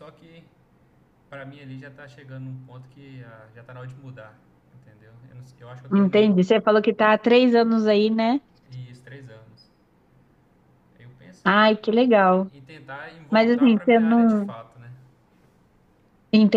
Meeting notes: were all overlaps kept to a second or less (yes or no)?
no